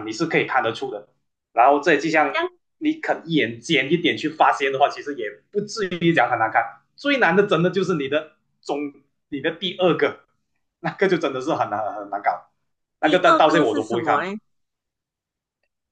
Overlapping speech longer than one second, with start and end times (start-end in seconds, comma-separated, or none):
13.0-14.3